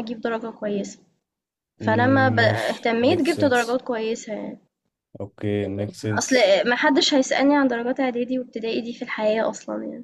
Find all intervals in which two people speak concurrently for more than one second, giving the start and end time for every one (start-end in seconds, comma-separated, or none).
2.4-3.8